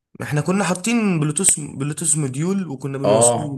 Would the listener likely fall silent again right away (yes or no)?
no